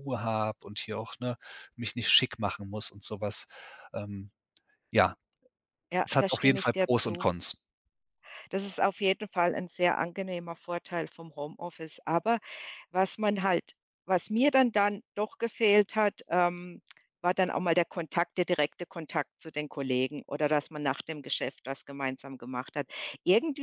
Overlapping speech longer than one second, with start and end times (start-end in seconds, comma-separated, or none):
6.0-7.3